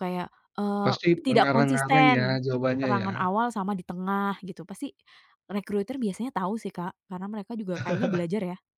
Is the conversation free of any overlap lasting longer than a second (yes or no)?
no